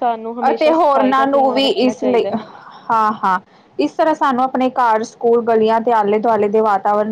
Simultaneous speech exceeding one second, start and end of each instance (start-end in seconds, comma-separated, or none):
0.5-2.3